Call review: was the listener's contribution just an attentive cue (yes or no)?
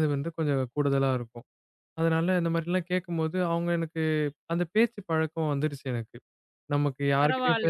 no